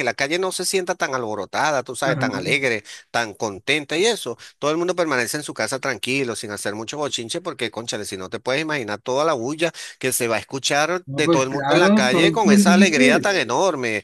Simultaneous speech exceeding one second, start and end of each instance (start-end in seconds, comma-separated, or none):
11.1-13.4